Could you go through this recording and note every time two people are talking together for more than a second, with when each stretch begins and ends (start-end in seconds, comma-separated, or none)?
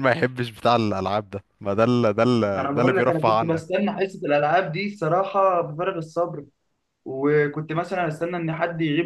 2.6-3.8